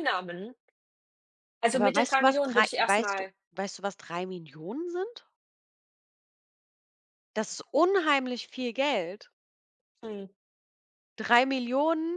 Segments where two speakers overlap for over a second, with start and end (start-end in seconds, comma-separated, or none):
1.7-3.3